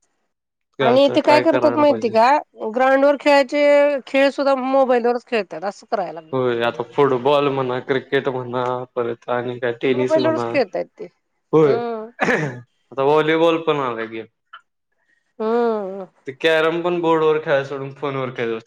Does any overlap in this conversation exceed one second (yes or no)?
no